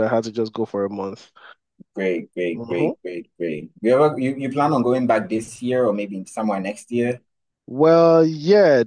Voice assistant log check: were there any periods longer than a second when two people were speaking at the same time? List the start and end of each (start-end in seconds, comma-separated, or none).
none